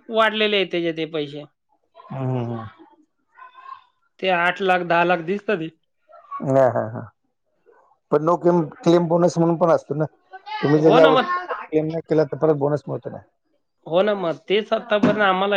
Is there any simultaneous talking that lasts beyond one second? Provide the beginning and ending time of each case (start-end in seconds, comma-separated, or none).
none